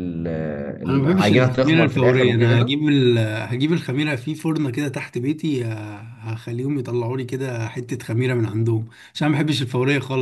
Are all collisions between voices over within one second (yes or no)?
no